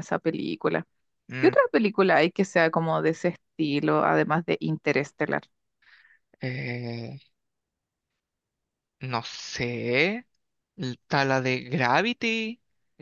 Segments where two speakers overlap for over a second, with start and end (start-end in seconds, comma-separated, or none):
none